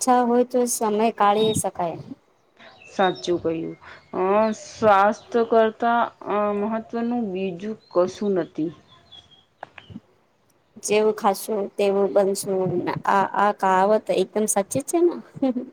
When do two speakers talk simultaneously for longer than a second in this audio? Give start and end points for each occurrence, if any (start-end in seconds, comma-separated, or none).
none